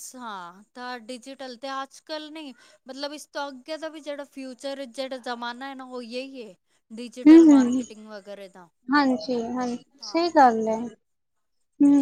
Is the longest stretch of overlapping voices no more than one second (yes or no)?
yes